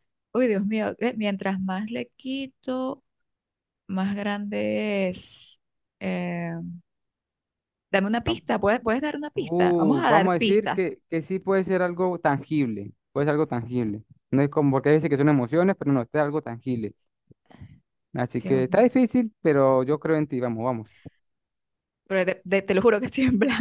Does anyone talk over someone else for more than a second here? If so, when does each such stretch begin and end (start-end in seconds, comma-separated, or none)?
9.3-10.9